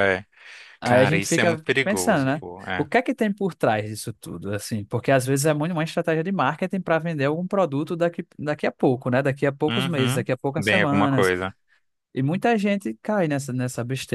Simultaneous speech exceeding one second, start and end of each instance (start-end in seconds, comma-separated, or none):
0.8-2.9, 9.7-11.3